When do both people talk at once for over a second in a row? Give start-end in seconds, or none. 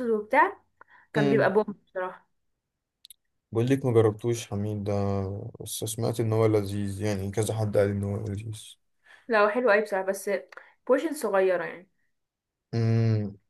none